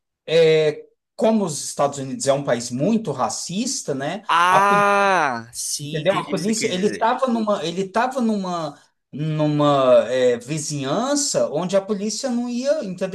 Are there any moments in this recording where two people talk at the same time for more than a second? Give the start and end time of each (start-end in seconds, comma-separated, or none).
5.8-7.1